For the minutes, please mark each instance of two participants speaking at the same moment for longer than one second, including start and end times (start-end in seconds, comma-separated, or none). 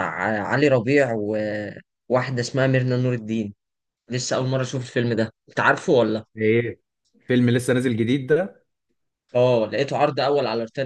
none